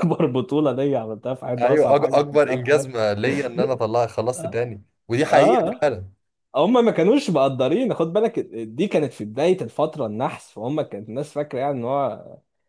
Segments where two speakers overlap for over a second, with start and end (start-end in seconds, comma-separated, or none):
1.6-3.1